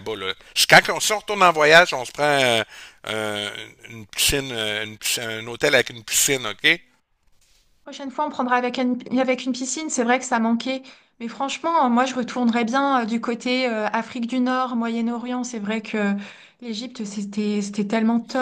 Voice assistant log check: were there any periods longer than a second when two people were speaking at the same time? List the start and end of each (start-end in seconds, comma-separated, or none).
none